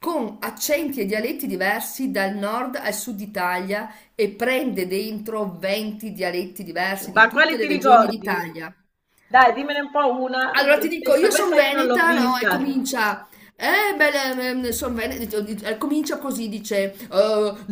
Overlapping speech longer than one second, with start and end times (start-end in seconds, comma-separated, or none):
7.1-8.4, 10.5-12.8